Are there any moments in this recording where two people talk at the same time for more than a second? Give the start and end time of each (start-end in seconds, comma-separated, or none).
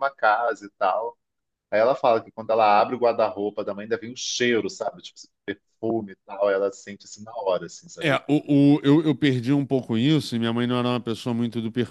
none